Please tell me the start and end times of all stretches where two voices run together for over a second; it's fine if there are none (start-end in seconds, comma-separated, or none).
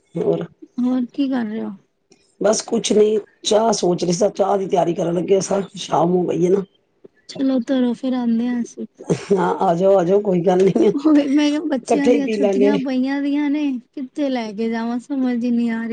11.0-12.7